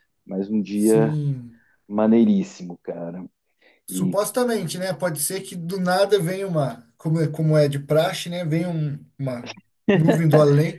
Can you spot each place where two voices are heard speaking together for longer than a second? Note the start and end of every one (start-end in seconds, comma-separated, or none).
none